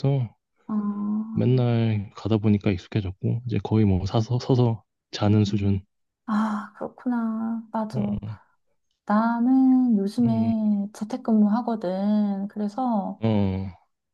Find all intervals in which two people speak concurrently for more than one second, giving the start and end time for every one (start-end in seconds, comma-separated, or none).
none